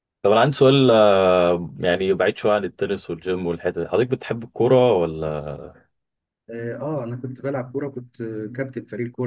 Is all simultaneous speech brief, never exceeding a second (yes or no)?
yes